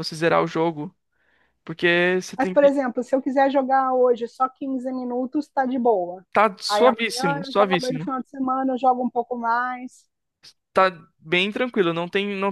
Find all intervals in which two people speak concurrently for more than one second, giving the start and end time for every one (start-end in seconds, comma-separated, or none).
6.7-8.1